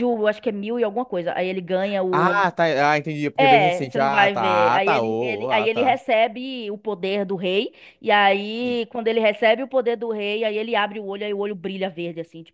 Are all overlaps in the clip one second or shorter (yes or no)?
no